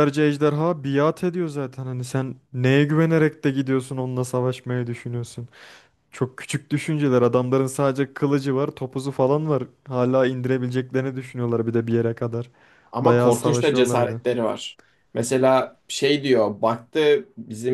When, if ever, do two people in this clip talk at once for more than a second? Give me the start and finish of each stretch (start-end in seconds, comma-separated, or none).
13.0-14.2